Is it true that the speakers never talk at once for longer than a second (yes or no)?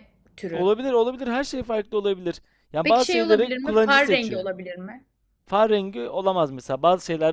no